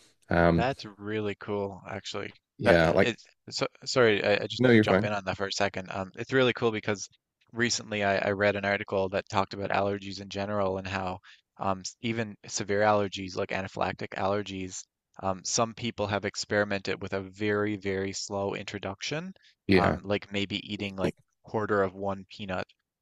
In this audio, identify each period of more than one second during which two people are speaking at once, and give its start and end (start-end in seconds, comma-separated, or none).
none